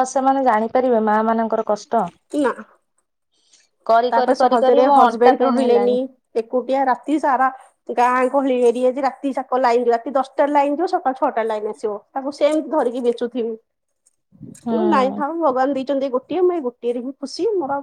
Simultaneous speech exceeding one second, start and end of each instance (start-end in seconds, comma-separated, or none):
4.1-5.9